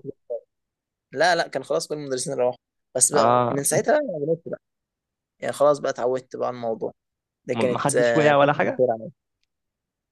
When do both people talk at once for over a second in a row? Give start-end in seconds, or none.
7.5-8.8